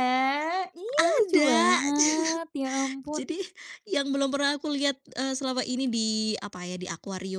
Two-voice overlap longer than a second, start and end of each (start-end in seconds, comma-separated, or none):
none